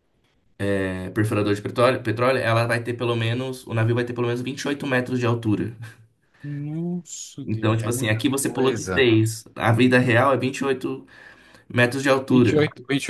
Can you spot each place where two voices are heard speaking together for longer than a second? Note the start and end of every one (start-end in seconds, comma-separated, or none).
7.4-9.1